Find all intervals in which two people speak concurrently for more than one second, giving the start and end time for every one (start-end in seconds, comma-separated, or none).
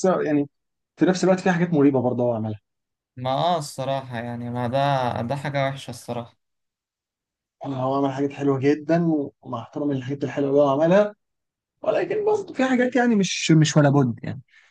none